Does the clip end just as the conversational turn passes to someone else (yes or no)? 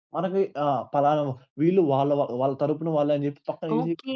yes